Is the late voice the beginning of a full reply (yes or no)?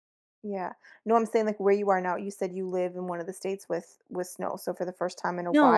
yes